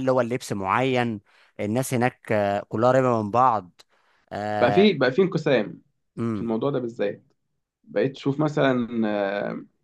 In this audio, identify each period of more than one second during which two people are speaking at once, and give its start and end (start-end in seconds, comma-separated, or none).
none